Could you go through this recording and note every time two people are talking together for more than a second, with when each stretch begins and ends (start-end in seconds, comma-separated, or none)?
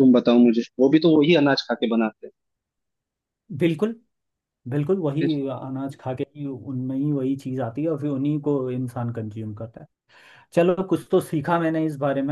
none